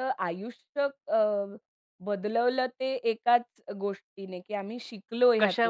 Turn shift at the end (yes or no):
no